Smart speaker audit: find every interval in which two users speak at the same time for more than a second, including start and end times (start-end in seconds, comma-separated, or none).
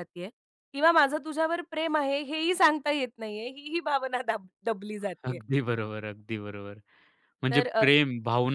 none